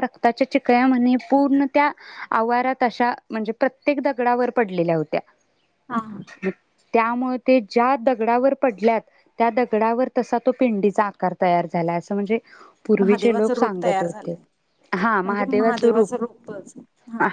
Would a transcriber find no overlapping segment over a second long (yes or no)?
no